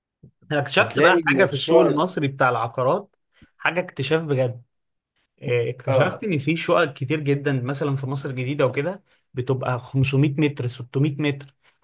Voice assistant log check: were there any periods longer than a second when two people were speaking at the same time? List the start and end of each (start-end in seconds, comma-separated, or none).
0.8-2.1